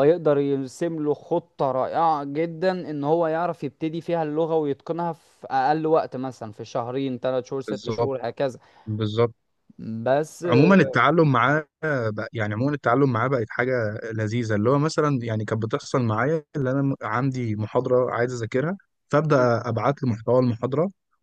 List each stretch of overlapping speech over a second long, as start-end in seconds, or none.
none